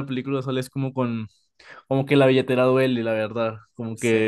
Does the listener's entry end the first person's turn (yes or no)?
no